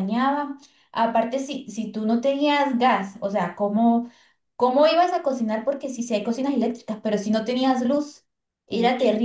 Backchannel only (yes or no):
yes